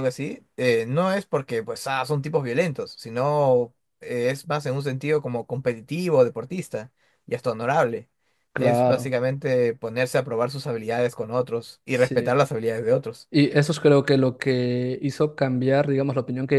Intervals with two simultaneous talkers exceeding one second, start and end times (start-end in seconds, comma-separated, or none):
none